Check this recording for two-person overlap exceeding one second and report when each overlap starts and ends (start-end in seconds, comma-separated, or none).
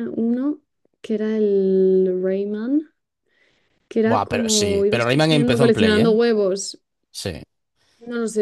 4.0-6.2